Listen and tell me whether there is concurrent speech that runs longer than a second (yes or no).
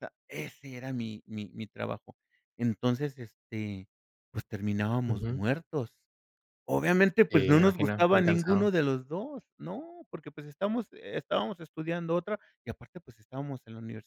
yes